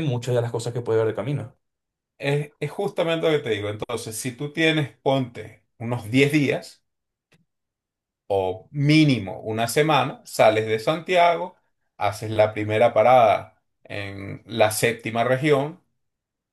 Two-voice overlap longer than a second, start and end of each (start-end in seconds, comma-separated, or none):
none